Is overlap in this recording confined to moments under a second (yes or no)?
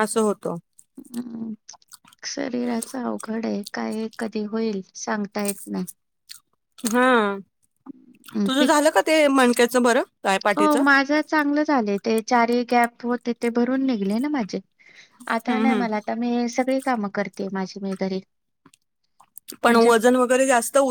yes